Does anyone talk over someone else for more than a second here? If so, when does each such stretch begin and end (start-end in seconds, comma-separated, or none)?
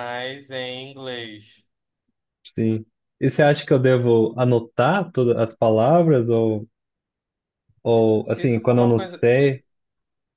8.2-9.6